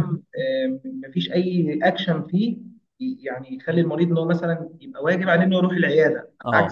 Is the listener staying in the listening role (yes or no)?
no